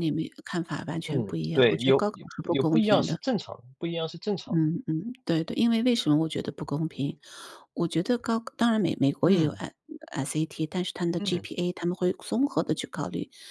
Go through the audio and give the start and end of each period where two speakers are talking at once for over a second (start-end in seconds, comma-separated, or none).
1.1-3.2